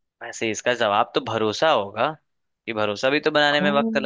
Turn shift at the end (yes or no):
no